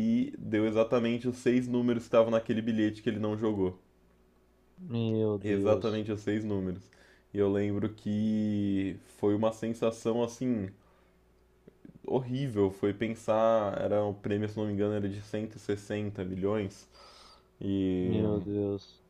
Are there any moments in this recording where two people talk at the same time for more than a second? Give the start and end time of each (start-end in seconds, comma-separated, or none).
none